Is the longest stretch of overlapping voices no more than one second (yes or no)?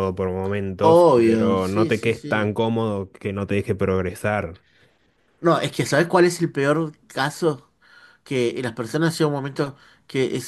no